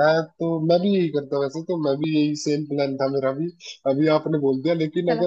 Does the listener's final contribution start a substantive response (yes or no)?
no